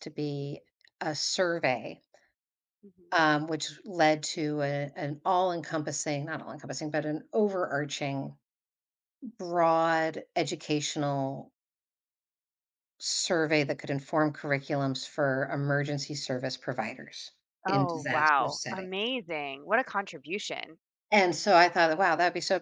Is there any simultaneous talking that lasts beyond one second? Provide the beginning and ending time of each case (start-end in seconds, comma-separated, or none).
17.7-18.9